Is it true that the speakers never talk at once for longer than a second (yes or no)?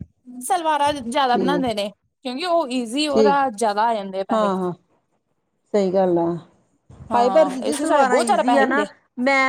no